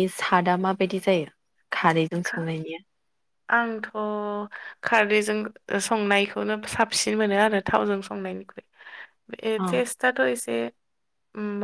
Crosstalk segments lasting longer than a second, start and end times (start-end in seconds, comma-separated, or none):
none